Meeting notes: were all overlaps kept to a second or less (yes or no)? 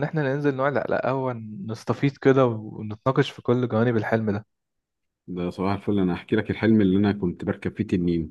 yes